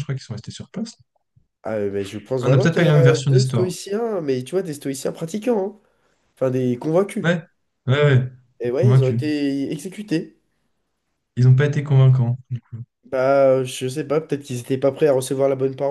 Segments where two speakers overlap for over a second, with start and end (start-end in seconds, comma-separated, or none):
2.4-3.7